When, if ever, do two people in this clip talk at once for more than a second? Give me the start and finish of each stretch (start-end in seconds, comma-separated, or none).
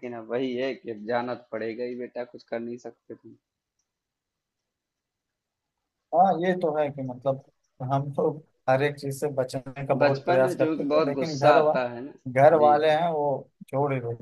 10.0-11.7